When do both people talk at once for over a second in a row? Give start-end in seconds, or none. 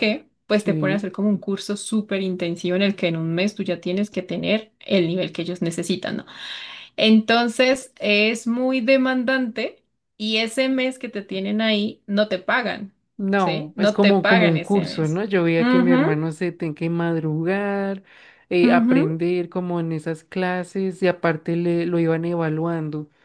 13.4-16.1